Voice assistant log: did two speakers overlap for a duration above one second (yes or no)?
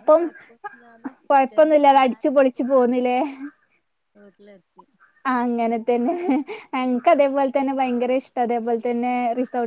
yes